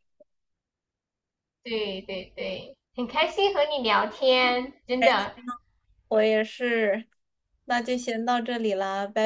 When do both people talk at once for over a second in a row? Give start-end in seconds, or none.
none